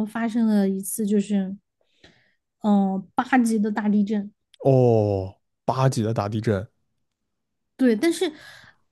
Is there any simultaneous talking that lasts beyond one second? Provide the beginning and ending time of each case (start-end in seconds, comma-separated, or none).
none